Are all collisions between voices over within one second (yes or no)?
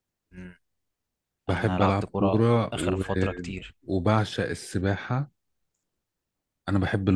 no